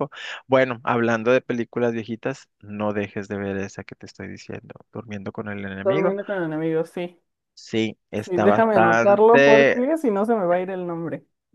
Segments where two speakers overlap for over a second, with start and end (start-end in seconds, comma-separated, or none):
8.2-9.8